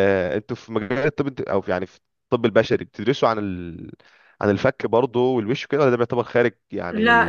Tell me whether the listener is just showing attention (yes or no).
no